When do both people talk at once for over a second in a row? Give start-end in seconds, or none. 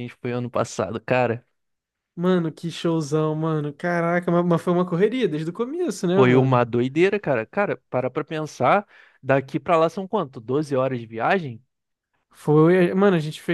none